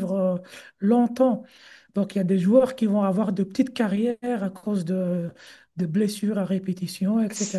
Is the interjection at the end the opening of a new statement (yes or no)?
no